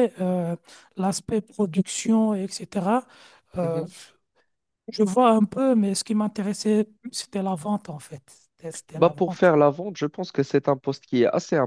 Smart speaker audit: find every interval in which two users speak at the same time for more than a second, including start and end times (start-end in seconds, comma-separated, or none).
none